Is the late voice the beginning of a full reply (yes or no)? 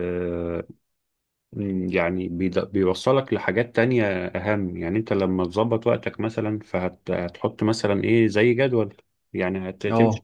no